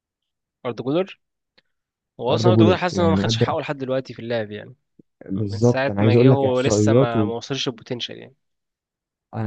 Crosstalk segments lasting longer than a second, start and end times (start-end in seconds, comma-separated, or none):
2.3-3.6, 5.3-7.3